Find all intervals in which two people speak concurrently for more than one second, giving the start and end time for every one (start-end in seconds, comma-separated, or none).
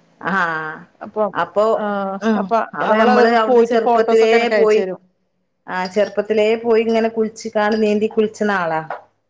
2.3-4.8